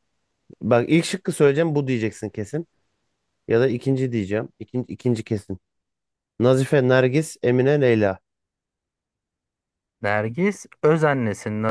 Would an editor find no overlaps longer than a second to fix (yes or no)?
yes